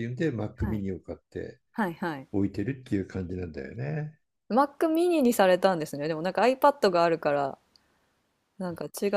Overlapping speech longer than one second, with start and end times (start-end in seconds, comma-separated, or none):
none